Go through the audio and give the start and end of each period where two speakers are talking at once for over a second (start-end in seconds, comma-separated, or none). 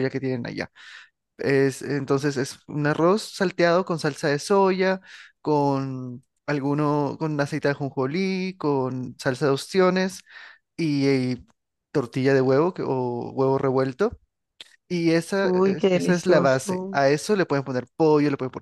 15.4-17.0